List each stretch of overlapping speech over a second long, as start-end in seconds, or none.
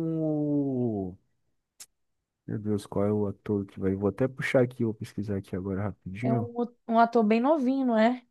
none